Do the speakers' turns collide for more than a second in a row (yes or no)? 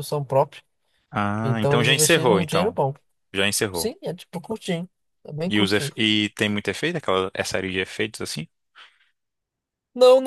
yes